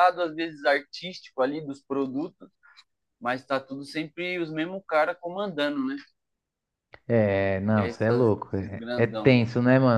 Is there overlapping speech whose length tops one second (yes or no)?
yes